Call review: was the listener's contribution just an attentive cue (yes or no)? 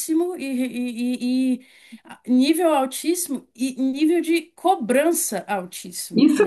no